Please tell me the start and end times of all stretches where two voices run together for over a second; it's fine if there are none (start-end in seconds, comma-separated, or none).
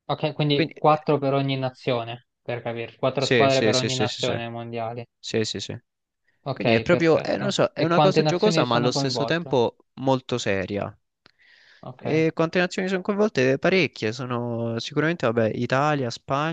3.2-4.4, 6.5-9.6